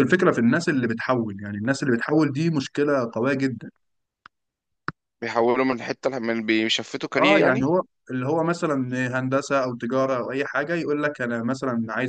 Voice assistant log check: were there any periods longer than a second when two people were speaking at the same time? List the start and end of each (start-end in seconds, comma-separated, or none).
none